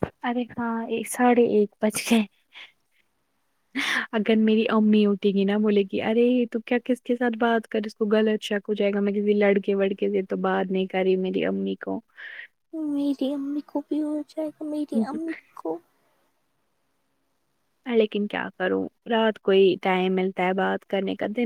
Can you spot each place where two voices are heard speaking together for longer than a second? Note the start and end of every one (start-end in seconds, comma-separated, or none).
none